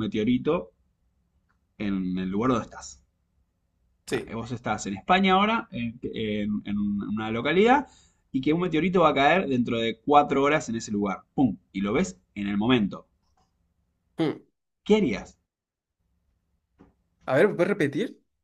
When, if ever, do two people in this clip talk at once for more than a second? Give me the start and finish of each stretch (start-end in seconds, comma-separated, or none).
none